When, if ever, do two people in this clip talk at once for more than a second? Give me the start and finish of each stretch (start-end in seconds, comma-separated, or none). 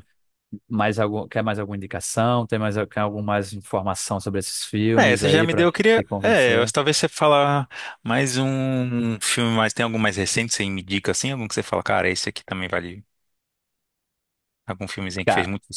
5.0-6.7